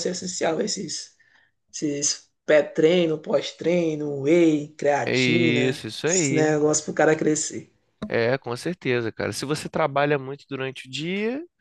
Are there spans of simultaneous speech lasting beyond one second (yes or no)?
yes